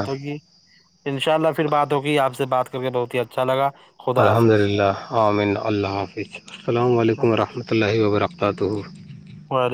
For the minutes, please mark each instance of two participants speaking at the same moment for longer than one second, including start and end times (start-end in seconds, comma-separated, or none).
none